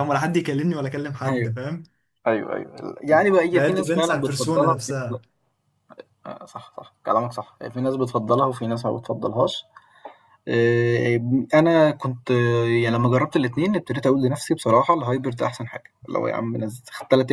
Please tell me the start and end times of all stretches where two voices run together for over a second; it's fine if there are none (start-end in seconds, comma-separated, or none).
3.5-5.2